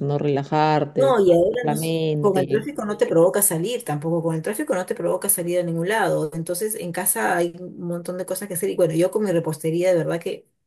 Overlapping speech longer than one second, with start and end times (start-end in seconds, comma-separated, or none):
0.9-2.6